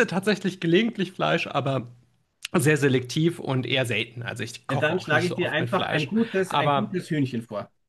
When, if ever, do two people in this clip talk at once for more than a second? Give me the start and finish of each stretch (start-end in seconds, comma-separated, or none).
4.7-7.0